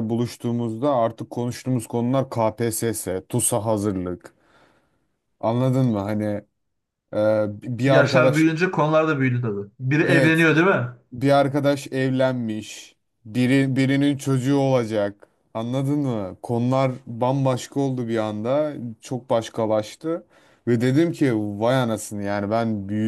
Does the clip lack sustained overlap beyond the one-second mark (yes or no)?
yes